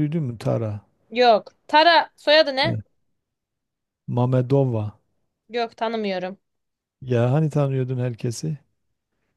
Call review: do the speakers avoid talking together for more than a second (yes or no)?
yes